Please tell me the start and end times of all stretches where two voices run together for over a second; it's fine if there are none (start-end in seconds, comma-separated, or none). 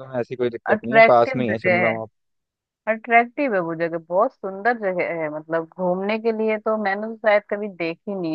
0.7-1.9